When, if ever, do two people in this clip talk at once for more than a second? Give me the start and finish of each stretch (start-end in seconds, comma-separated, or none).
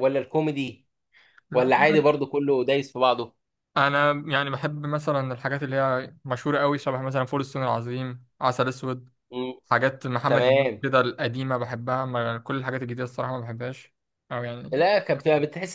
none